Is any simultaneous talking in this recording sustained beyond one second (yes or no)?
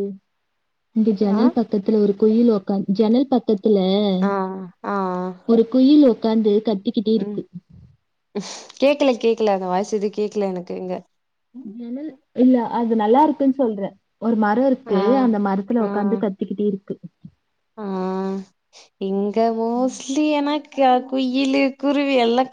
no